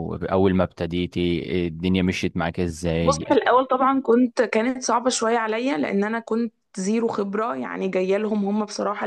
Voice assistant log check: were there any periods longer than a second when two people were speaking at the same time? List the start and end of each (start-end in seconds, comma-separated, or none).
none